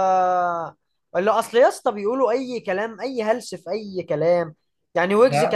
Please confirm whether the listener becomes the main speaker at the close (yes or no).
no